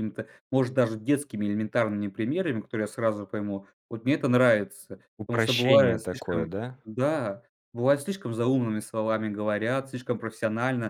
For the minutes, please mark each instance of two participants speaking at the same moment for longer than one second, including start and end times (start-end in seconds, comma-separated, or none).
5.2-6.8